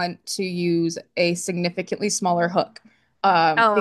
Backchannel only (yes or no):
yes